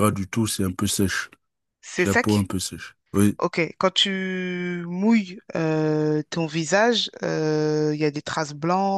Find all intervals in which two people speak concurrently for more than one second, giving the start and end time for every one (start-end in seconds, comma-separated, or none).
none